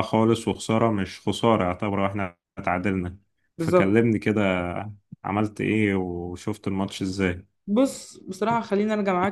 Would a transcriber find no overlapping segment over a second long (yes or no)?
yes